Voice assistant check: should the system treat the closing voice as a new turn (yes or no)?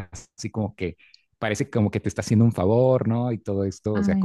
no